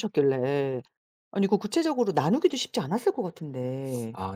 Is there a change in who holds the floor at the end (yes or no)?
yes